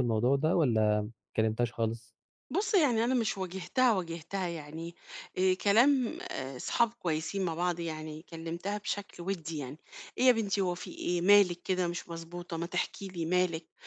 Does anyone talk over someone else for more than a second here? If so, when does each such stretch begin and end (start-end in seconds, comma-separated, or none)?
none